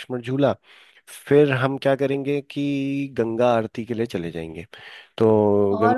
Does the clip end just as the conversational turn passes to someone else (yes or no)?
yes